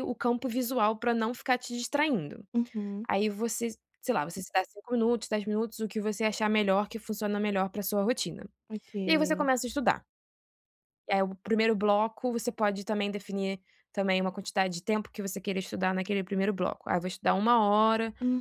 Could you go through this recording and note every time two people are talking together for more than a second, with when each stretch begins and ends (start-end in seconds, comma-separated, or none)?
none